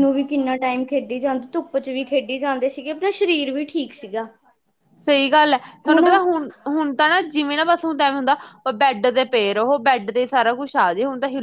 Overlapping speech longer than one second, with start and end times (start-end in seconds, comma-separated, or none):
none